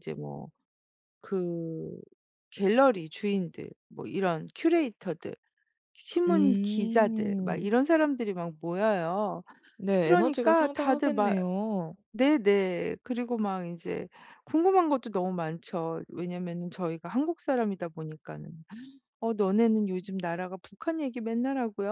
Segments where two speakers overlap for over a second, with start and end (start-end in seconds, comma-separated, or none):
6.3-7.7, 10.0-11.3